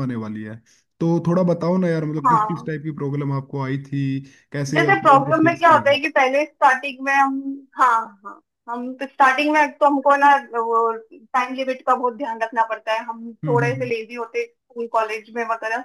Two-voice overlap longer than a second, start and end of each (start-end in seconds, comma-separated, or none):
4.8-6.0